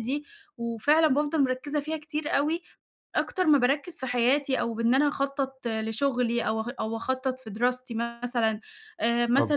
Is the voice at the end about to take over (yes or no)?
no